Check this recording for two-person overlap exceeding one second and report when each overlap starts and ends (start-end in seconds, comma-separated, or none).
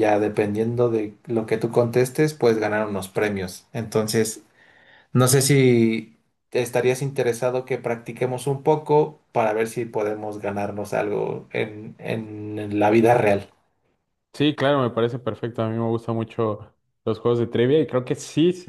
none